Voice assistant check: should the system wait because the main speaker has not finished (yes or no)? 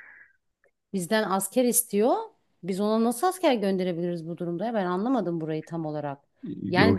yes